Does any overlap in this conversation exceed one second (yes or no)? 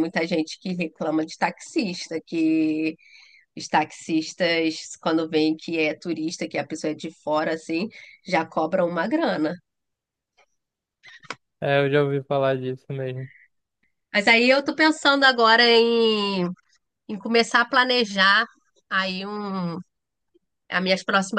no